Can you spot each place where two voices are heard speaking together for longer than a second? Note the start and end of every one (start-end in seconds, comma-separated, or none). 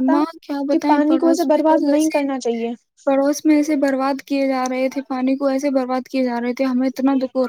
none